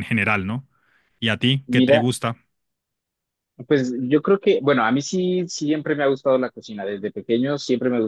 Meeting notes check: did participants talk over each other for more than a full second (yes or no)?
no